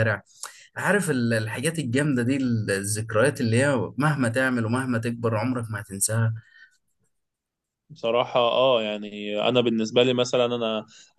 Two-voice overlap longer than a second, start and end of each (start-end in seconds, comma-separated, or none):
none